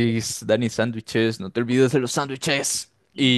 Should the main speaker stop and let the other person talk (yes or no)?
no